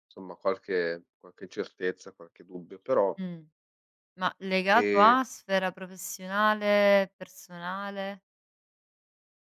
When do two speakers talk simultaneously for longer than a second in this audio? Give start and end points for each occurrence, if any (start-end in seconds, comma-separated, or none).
none